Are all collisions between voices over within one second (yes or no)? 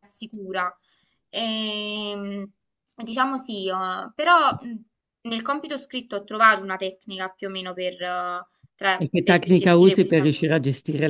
no